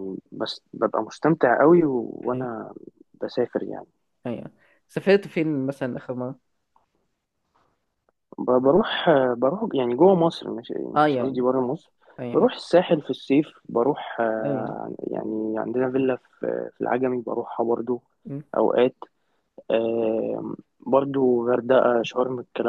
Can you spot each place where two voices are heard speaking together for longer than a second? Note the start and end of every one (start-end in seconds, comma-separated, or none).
none